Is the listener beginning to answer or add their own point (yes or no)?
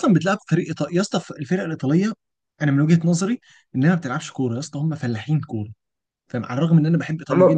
yes